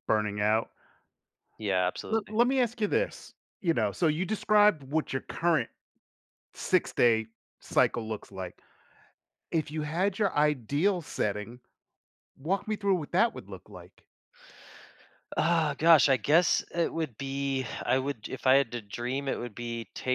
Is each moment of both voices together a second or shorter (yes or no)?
yes